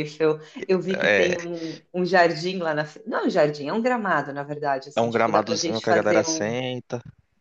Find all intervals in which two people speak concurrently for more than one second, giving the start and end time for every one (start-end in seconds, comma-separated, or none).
4.9-6.6